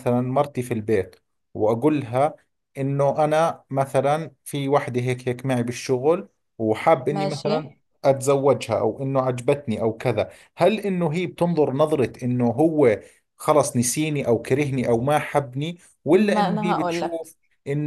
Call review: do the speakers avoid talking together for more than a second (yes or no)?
no